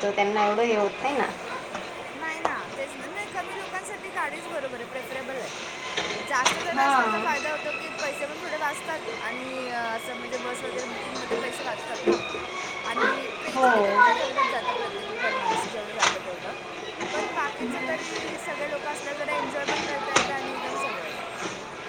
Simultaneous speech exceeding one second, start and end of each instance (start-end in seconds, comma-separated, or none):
none